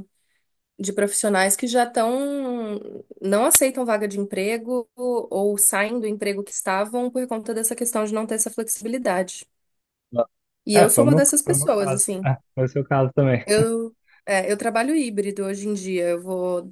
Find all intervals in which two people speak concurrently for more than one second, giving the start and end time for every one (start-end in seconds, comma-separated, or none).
10.7-12.3